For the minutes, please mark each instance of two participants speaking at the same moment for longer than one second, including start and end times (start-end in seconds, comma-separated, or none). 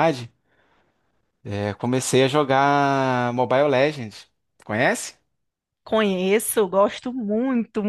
none